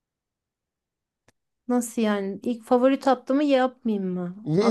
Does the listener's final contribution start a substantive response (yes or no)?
yes